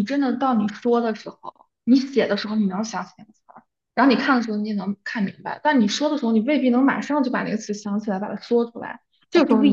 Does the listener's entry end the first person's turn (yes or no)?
no